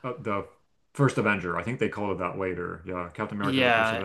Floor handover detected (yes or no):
yes